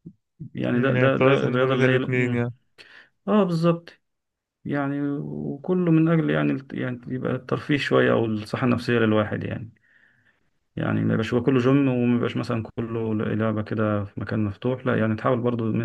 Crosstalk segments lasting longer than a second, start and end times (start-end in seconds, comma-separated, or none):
0.7-2.5